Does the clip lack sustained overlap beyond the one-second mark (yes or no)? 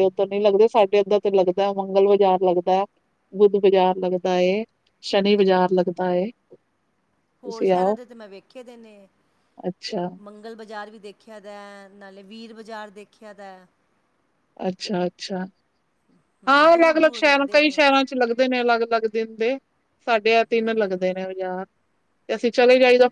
no